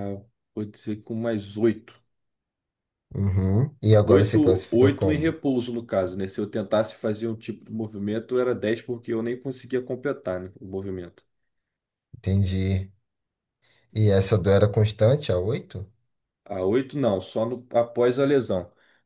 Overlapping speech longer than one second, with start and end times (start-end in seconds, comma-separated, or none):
4.0-5.3